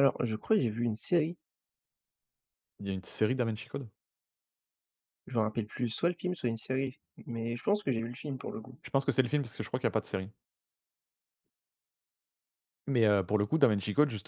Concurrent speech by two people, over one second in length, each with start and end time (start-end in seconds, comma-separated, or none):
none